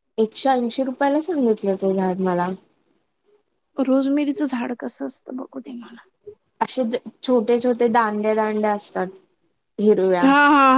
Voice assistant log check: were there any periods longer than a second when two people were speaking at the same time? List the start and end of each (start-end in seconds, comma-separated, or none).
none